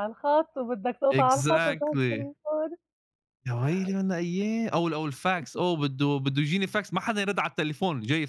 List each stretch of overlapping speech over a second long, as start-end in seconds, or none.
1.1-2.3